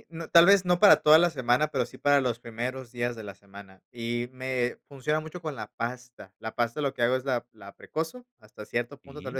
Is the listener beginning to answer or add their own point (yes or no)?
no